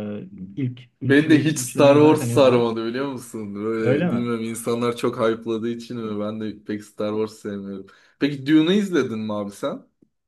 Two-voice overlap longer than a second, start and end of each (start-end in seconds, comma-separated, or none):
1.0-2.6